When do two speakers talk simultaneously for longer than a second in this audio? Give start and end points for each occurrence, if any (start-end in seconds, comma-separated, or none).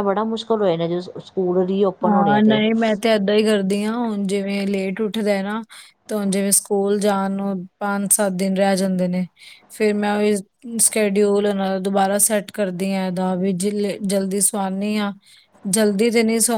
none